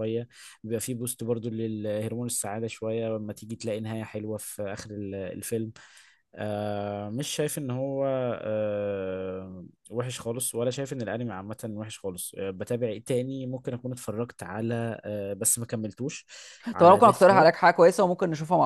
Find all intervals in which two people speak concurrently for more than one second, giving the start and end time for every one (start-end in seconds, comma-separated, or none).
none